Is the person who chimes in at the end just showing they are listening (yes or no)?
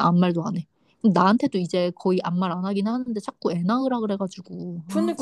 no